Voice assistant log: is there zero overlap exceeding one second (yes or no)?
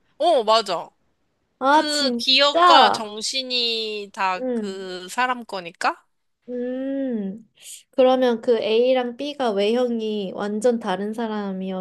no